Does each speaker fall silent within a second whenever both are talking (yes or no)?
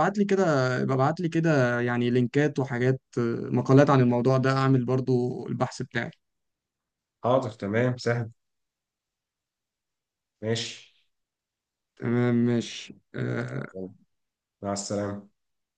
yes